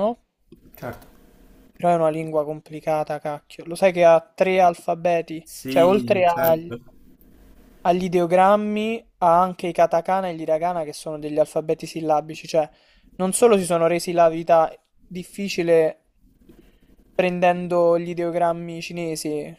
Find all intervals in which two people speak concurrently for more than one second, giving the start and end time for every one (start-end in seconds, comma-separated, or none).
5.4-6.8